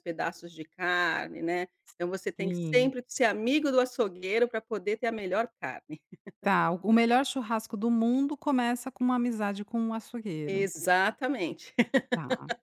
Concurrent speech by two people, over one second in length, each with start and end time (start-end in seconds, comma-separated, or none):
none